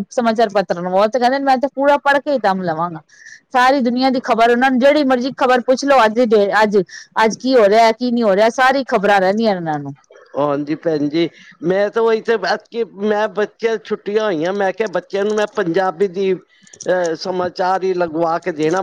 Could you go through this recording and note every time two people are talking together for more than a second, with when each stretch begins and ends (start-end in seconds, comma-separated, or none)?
none